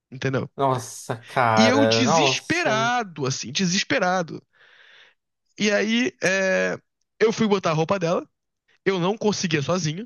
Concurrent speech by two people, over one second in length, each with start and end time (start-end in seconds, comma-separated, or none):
1.6-3.0